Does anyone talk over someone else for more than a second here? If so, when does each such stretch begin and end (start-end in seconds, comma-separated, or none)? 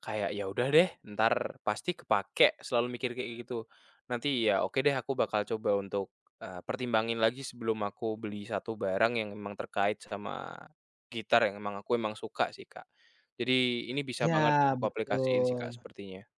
14.2-15.9